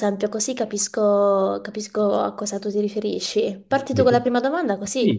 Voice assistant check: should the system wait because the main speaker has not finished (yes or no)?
no